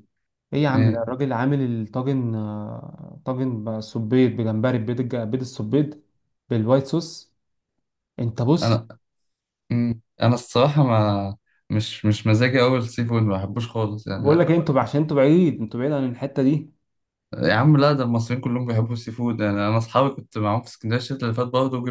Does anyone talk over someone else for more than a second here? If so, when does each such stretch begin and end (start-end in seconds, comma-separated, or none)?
none